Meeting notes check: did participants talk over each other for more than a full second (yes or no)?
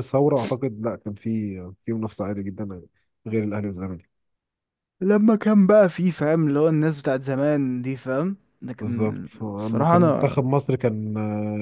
yes